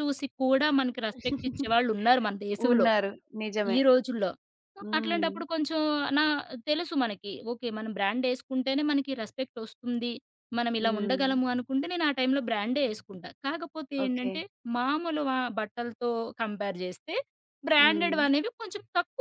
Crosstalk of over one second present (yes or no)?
no